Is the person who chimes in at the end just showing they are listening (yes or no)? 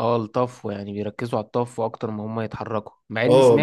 yes